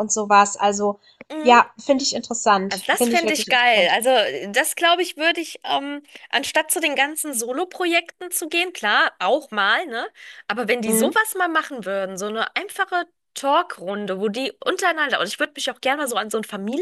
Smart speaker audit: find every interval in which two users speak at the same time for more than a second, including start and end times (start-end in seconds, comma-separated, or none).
2.7-3.9